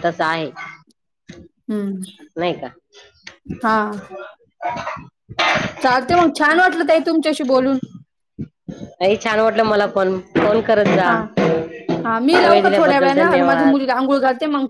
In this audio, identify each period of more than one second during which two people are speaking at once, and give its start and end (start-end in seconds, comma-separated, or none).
12.5-13.8